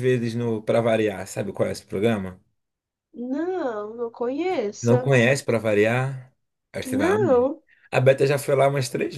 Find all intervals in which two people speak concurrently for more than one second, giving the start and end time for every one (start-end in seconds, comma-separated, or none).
none